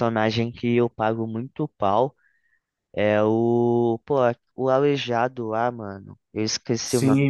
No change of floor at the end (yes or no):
no